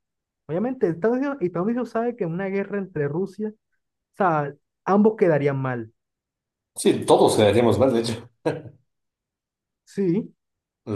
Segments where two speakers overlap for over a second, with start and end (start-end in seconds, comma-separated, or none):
none